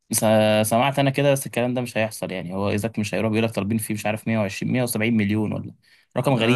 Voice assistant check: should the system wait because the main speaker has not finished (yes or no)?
no